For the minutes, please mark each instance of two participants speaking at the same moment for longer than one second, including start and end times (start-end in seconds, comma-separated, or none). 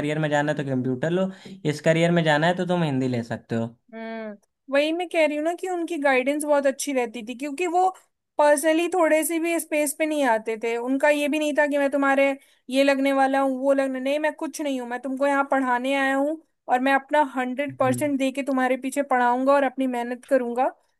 none